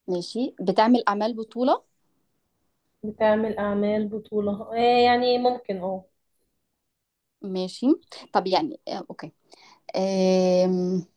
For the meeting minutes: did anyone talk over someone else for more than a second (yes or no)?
no